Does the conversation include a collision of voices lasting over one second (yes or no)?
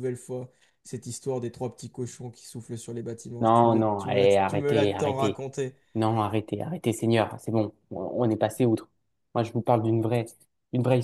yes